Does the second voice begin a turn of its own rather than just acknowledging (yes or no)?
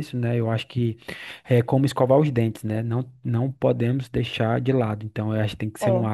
no